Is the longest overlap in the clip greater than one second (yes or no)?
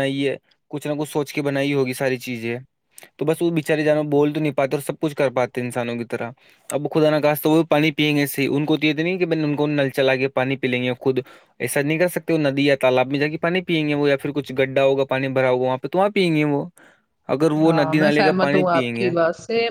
yes